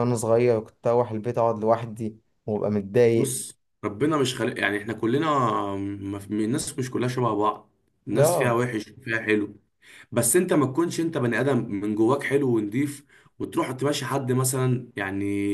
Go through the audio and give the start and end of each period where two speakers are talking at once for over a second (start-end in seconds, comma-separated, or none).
none